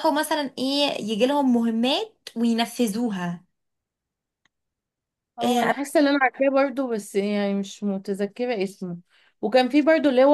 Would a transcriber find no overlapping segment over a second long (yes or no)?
yes